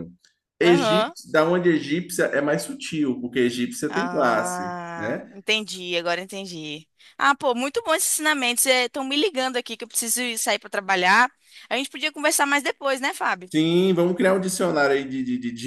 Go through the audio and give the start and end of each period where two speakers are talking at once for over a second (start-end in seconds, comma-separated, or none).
3.9-5.3